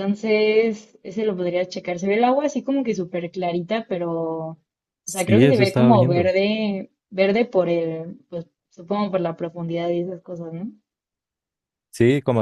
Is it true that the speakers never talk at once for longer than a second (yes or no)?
no